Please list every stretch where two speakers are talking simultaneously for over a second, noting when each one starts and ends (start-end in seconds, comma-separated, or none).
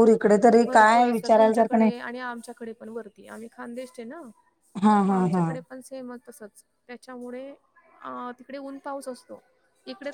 0.7-1.9